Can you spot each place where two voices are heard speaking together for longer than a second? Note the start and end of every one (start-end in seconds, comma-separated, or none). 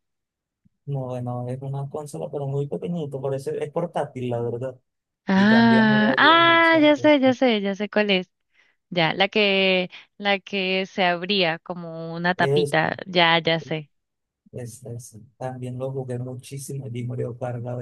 5.3-6.9